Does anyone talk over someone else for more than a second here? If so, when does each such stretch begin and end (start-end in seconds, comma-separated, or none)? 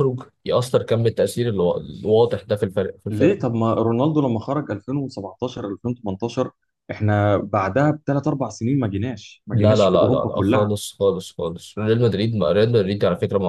9.5-10.7